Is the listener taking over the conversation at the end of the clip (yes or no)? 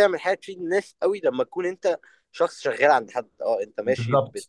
no